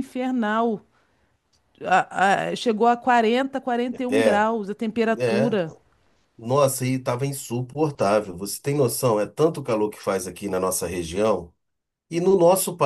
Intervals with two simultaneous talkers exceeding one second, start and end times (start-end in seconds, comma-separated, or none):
none